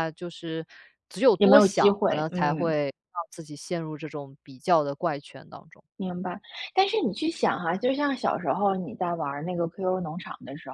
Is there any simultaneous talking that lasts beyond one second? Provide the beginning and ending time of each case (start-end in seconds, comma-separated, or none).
1.4-2.7